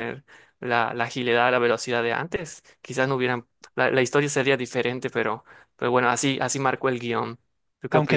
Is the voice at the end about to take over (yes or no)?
yes